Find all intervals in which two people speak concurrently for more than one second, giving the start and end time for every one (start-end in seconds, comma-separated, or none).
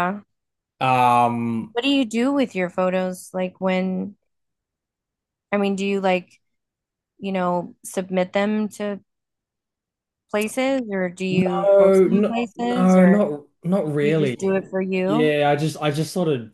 11.3-13.2